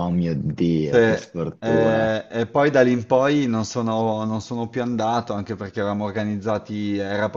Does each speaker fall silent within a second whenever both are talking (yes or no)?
no